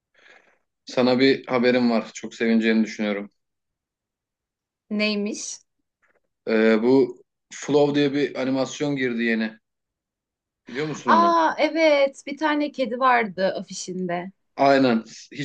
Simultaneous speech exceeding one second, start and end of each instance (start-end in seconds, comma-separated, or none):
none